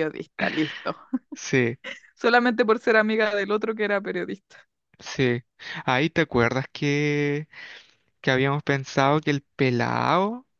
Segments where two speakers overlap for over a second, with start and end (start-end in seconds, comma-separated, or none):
none